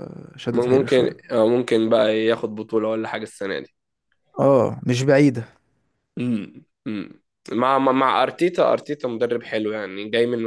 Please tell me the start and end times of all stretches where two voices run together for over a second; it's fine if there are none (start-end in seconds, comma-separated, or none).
none